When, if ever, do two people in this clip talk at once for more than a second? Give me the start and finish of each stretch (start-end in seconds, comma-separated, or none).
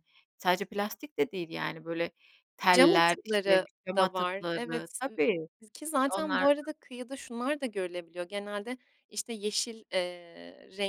2.7-5.2